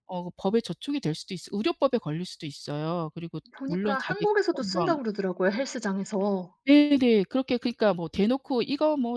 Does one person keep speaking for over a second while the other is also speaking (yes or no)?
yes